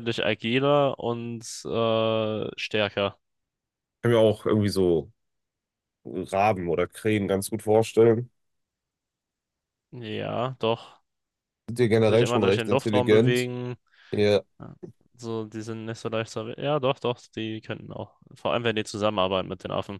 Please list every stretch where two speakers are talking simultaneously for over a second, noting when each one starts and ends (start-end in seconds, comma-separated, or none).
11.9-13.5